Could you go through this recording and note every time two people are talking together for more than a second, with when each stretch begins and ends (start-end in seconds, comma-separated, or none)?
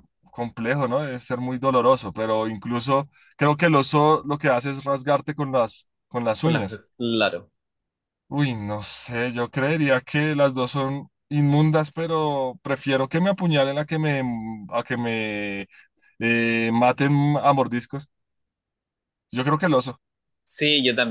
none